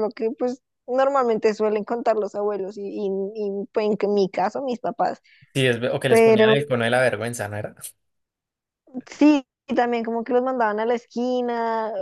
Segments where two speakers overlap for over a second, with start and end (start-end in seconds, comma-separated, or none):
none